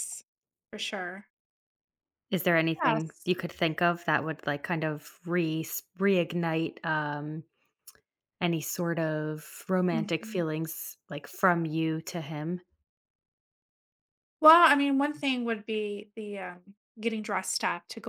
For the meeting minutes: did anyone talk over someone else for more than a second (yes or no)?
no